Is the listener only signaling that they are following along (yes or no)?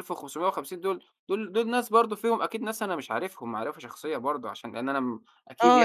no